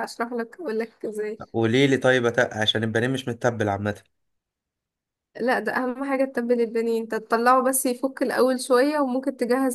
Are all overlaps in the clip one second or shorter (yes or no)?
yes